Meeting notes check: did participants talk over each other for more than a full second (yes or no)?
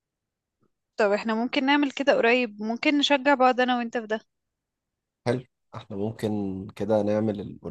no